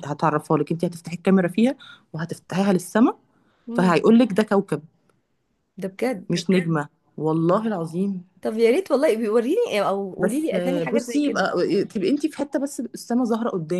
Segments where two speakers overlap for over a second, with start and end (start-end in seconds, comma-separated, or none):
10.2-11.5